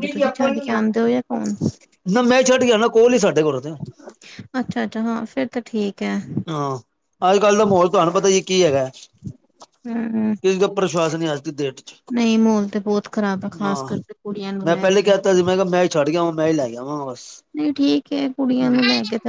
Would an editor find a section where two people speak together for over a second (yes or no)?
no